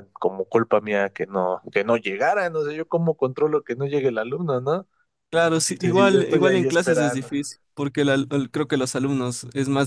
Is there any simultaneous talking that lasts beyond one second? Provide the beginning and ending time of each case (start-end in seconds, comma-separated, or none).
5.8-7.3